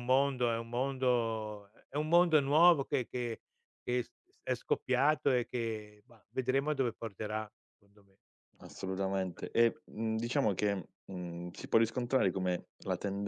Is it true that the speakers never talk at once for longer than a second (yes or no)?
yes